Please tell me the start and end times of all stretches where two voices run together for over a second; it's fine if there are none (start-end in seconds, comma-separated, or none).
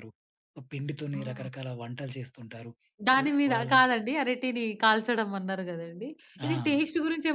none